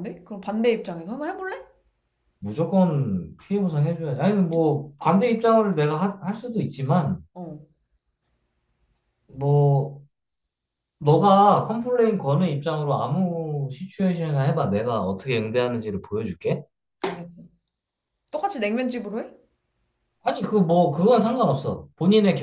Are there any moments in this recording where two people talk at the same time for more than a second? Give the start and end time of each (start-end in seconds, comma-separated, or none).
none